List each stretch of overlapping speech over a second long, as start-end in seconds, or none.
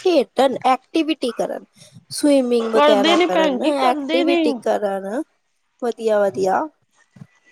2.7-4.4